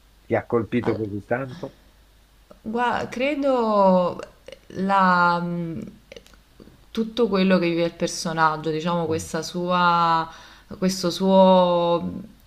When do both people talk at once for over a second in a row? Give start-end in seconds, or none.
none